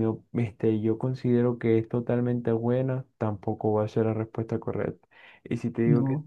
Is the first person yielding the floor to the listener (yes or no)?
no